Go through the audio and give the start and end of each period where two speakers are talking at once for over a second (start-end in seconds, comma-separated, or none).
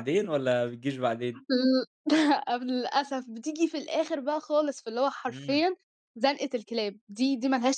none